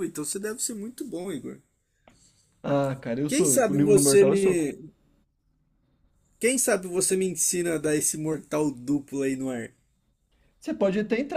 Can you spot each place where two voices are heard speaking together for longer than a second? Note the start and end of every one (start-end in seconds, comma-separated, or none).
3.3-4.6